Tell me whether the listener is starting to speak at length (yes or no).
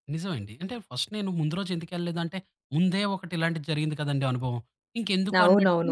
yes